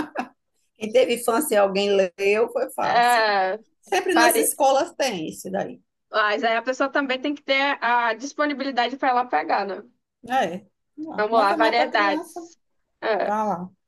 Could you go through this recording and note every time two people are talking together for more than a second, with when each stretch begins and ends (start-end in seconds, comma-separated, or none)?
11.2-12.4